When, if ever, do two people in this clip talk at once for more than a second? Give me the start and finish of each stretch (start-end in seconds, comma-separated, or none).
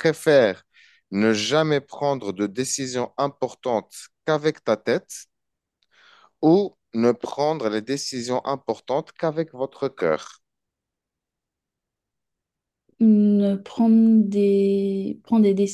none